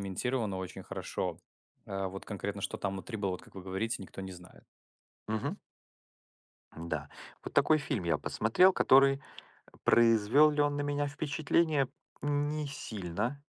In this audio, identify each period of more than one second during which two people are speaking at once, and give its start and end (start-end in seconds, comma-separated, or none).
none